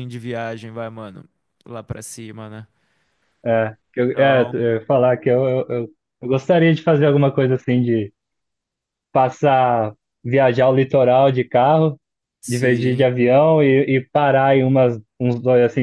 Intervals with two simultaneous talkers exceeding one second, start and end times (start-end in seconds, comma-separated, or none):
none